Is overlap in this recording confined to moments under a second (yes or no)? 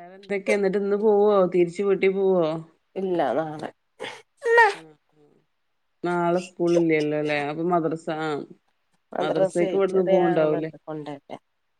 no